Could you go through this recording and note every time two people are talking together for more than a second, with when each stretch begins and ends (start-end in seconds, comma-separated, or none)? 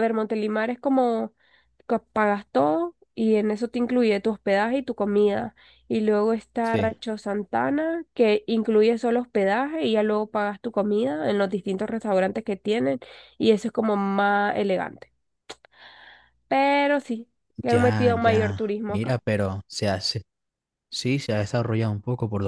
17.7-19.2